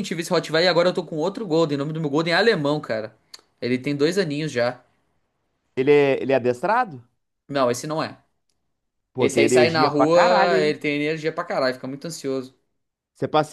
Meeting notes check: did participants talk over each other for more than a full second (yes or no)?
yes